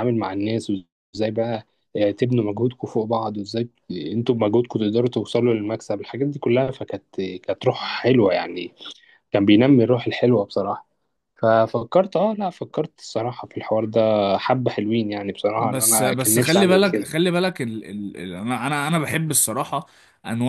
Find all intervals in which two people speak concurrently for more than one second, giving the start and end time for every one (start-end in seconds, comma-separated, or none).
15.6-17.1